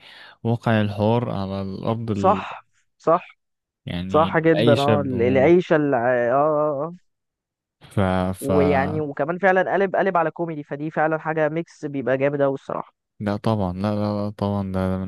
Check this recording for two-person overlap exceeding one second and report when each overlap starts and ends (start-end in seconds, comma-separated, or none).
4.1-5.5